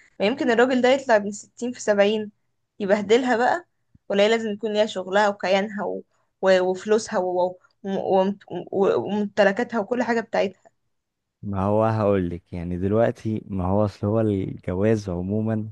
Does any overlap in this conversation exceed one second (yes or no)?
no